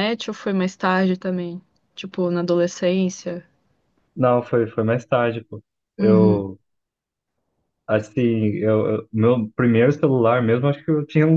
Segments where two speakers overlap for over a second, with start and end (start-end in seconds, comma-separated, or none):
none